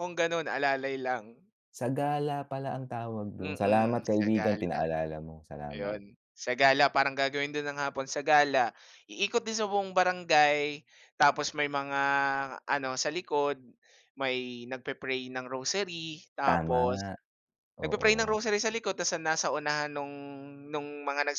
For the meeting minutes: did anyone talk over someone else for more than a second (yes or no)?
yes